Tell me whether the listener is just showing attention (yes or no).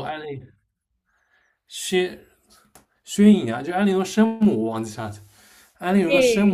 yes